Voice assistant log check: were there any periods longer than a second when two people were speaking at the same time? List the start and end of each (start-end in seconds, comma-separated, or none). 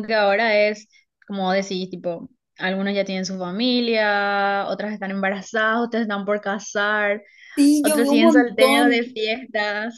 7.8-9.2